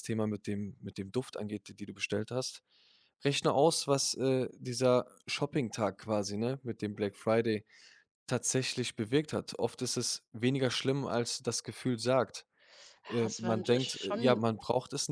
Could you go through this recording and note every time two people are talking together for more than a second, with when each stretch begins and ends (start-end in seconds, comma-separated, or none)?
13.1-14.6